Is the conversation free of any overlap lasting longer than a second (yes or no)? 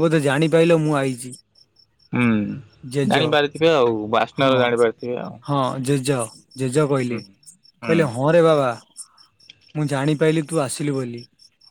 yes